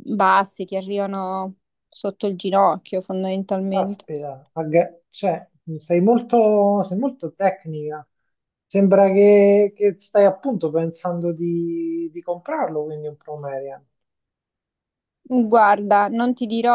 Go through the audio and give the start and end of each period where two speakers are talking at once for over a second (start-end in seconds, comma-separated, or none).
none